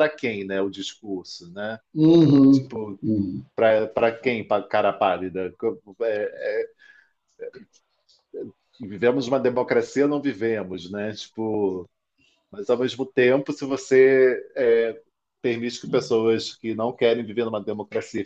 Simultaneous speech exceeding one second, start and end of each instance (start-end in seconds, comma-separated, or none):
none